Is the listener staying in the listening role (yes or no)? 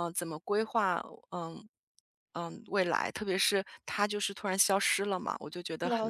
no